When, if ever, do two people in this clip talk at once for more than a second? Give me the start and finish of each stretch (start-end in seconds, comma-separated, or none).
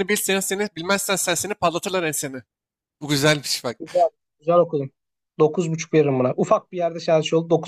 none